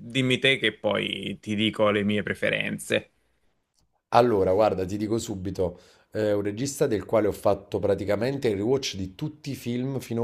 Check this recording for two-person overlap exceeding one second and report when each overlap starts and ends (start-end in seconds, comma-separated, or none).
none